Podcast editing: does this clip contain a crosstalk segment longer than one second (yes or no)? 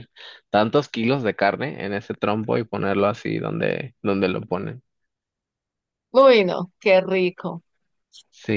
no